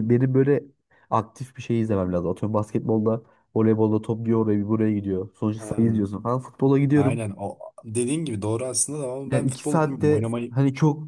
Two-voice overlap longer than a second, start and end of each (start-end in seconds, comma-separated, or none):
9.3-10.6